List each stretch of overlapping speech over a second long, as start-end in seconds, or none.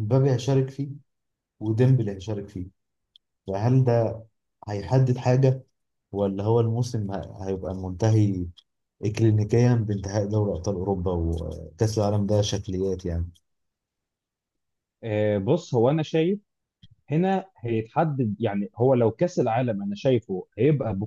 none